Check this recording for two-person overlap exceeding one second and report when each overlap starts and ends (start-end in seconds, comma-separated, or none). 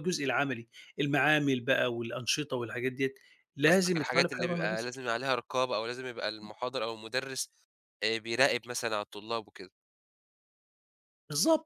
3.7-4.9